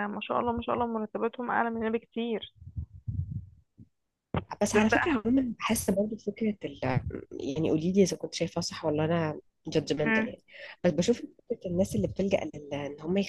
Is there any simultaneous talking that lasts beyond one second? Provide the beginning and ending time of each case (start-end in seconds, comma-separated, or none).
none